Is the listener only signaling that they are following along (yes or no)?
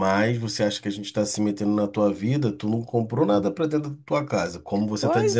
no